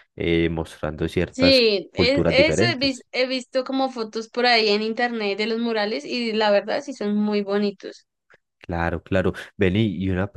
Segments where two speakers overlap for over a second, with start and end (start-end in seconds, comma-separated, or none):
1.3-3.1